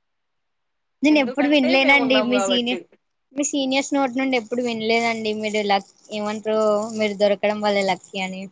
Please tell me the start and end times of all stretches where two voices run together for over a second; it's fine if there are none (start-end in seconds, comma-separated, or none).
1.1-2.8